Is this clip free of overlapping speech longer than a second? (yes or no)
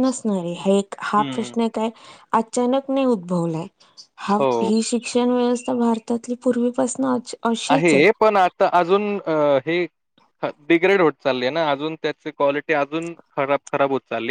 yes